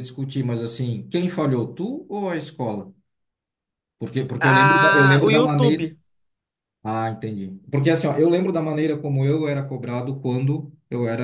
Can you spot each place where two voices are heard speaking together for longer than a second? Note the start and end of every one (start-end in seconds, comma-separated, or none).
4.4-5.9